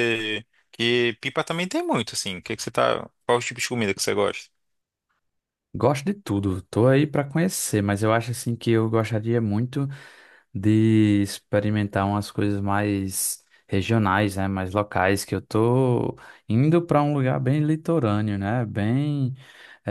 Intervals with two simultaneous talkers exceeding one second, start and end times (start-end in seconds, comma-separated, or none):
none